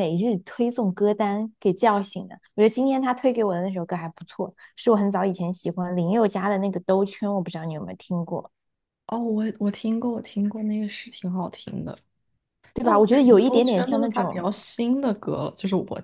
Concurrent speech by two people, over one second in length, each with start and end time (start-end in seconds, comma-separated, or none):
12.8-14.5